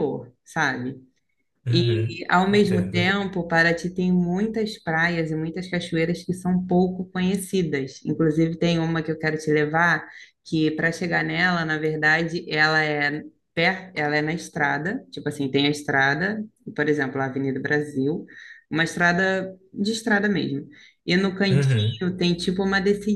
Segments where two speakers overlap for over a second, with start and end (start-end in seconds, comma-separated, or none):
1.7-3.1